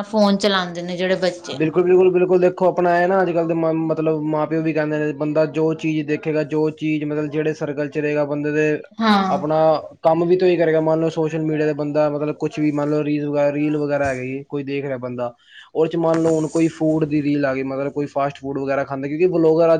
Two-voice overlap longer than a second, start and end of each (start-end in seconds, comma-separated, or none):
none